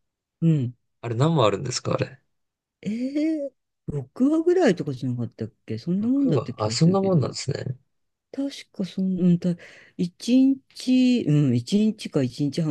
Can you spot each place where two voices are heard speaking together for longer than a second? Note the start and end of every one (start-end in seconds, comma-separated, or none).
6.0-7.3